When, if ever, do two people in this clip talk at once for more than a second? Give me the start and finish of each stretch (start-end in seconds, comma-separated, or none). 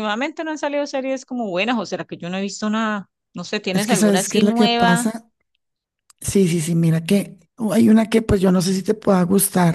3.7-5.1